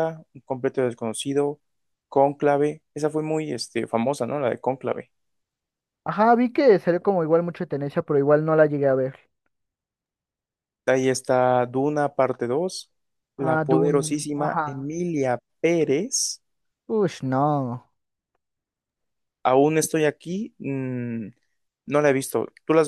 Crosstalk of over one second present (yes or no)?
yes